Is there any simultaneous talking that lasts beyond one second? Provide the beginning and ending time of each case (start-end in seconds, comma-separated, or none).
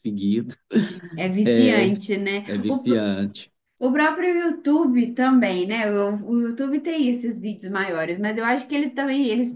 none